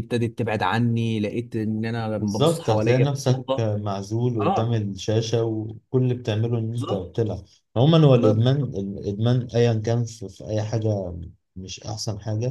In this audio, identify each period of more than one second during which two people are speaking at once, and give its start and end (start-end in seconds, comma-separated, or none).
2.2-3.6